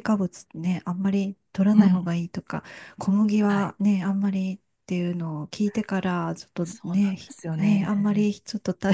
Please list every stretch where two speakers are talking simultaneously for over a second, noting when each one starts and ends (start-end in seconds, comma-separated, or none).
6.6-8.3